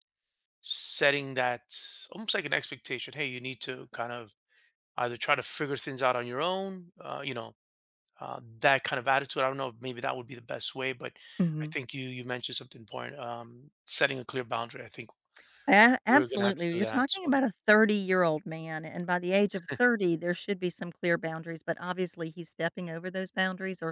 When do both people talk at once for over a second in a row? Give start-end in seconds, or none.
16.1-17.4